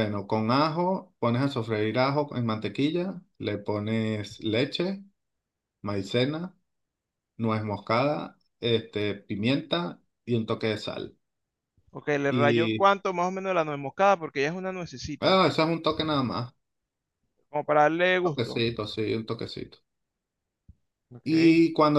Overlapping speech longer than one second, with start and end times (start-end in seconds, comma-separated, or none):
none